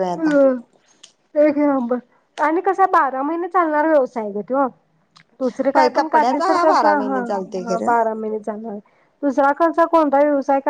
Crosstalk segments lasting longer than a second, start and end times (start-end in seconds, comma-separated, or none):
5.7-7.9